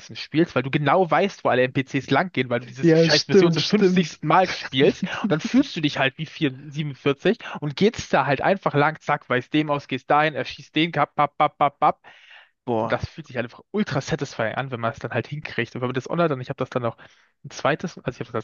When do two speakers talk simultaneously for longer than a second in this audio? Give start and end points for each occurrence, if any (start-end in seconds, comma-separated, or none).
2.8-4.2